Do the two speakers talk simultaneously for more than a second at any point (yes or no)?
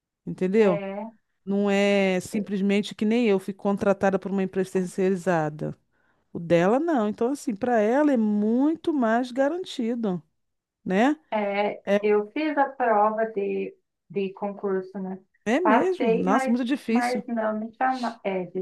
yes